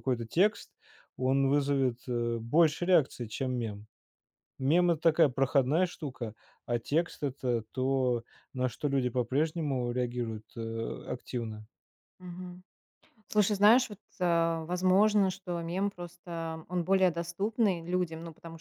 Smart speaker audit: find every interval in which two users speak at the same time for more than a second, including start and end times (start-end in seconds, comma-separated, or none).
none